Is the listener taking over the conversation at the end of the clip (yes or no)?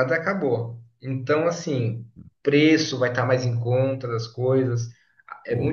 no